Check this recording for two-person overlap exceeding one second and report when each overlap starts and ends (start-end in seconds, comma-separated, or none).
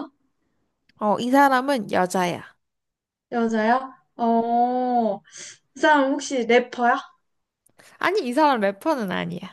none